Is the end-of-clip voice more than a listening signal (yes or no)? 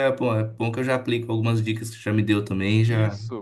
yes